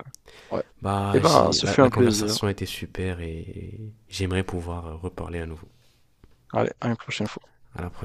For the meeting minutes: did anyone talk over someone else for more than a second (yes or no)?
yes